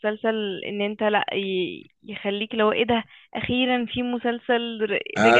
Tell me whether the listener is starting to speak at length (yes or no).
yes